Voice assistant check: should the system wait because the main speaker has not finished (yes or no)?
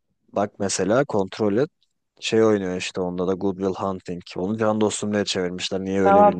no